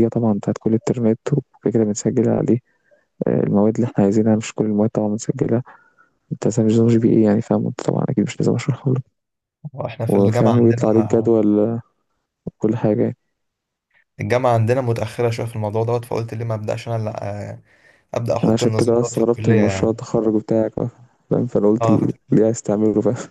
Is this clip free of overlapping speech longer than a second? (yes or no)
no